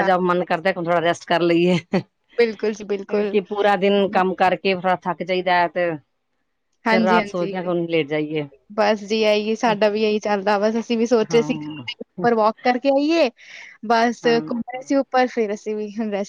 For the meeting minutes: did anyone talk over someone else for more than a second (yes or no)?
no